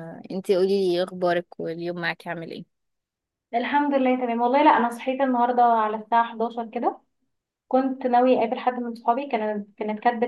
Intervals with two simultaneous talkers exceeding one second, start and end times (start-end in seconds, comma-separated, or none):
none